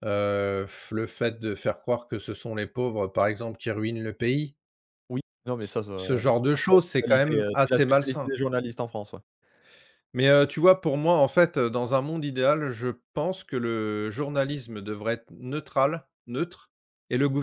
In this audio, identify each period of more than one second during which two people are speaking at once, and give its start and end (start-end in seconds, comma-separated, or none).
6.0-8.3